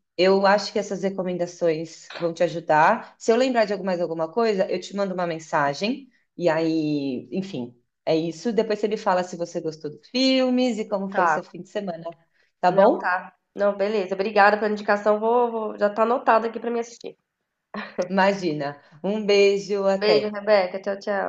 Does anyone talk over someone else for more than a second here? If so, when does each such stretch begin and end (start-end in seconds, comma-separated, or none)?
none